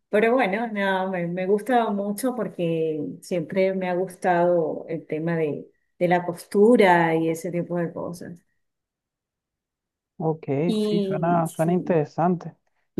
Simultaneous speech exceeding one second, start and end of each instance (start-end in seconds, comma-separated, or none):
10.7-12.0